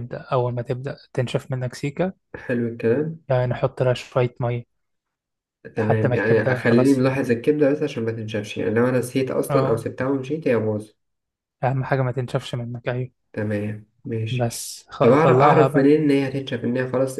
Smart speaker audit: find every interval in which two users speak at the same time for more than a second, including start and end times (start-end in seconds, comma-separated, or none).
5.8-7.1, 14.3-15.9